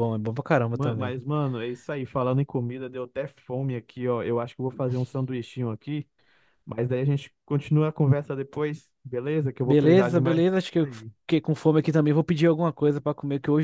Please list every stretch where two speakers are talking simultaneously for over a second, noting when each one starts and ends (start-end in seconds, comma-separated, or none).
9.6-10.9